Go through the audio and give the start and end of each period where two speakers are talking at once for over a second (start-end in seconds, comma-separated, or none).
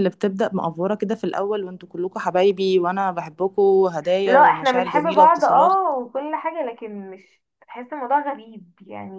4.2-5.9